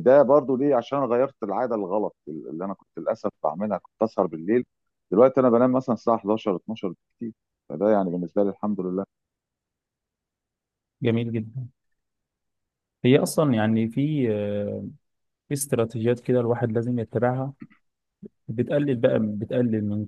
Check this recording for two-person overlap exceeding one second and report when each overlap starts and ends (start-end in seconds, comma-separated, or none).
none